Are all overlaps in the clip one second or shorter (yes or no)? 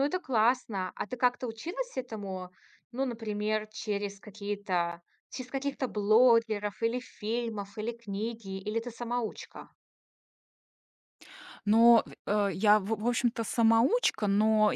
yes